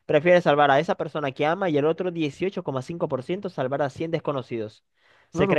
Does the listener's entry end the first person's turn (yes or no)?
yes